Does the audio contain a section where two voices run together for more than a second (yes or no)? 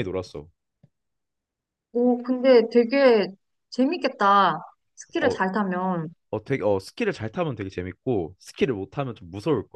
no